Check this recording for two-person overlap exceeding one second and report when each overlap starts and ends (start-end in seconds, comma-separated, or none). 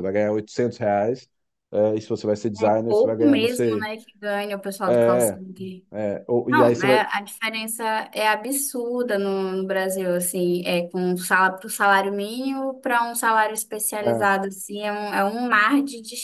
2.6-3.9